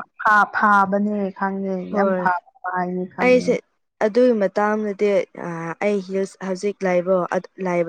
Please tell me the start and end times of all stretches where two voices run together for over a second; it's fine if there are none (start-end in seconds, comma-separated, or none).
none